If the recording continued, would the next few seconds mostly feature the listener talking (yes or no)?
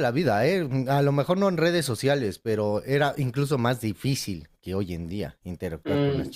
yes